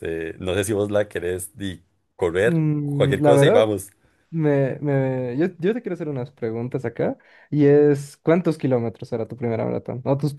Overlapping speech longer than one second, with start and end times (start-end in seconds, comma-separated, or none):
2.4-3.7